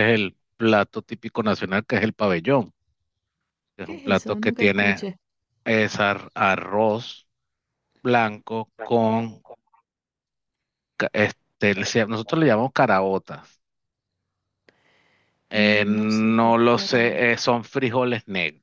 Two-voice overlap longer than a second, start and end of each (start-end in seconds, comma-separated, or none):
3.8-5.0, 15.5-17.4